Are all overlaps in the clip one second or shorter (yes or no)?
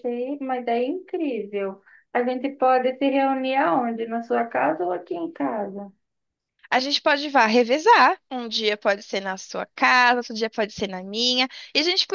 yes